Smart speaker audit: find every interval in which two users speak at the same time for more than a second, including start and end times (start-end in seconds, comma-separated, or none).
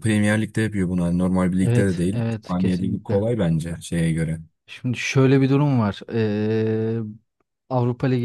1.6-3.2